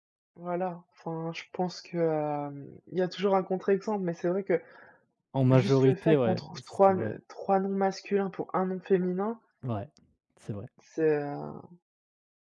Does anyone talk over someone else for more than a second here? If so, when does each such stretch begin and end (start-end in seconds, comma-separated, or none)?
5.5-7.2